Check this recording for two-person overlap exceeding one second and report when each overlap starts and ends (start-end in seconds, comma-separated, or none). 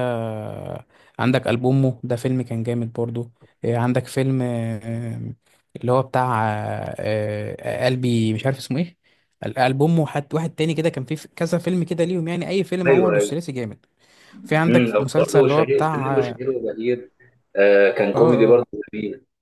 14.7-16.4